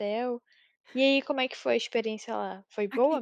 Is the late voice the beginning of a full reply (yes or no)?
yes